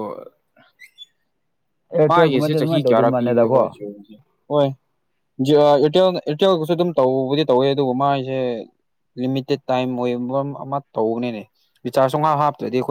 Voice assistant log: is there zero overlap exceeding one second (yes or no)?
no